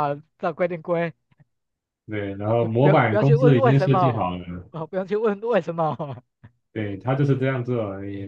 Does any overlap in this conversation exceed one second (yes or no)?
yes